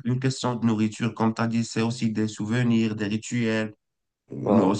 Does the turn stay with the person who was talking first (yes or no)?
yes